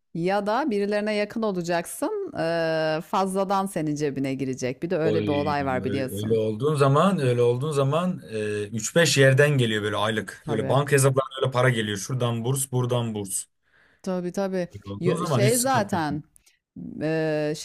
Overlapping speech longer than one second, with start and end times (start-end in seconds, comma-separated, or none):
5.0-6.4, 14.7-16.0